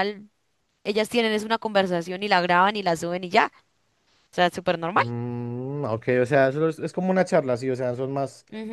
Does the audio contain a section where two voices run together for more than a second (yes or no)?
no